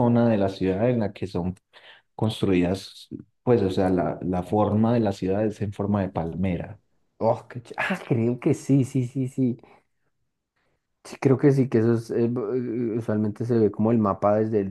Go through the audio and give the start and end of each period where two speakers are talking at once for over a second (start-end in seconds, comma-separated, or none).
none